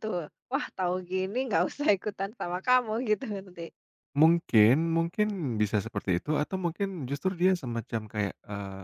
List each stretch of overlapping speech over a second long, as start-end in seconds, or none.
none